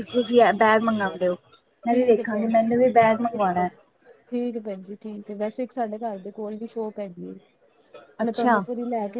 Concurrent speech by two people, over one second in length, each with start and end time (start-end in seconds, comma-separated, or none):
1.9-3.7